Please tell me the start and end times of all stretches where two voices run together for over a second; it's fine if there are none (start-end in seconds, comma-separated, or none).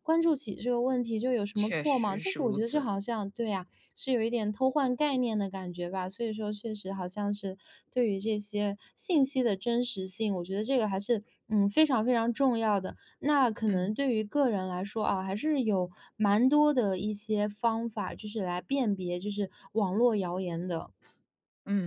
1.6-2.9